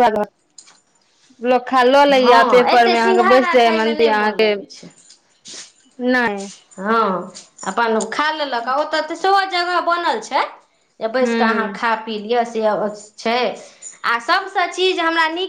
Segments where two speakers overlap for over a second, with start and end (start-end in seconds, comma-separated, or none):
2.1-4.5